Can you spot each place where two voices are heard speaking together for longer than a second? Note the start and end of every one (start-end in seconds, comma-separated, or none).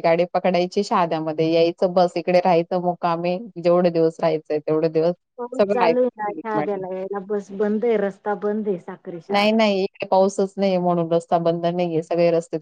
none